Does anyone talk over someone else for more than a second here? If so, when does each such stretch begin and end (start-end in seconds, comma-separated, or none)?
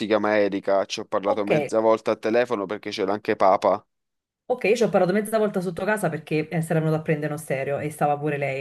none